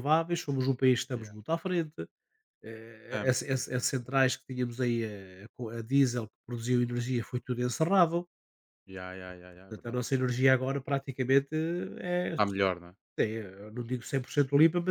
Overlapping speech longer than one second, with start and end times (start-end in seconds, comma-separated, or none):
3.0-4.2